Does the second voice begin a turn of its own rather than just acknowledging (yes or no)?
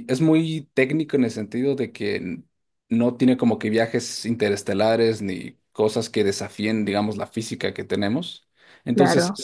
no